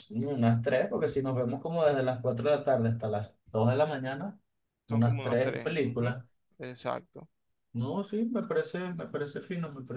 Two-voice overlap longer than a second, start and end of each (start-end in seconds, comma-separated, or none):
4.9-6.2